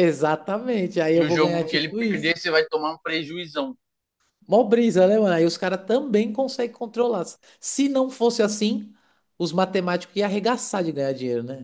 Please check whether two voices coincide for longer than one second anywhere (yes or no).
yes